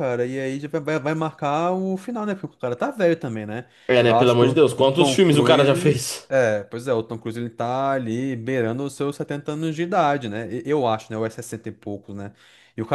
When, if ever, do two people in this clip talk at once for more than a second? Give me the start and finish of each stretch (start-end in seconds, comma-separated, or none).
4.0-6.3